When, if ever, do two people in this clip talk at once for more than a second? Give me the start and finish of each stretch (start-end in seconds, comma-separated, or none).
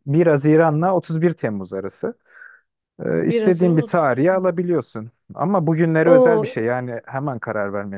3.2-4.5